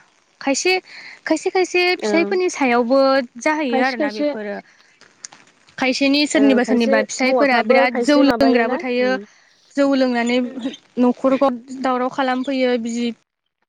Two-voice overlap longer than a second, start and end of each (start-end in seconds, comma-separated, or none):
6.4-9.1